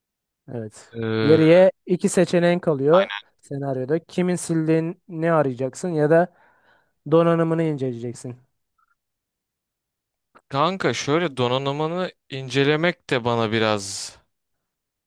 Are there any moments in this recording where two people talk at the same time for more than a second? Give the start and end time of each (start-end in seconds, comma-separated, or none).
none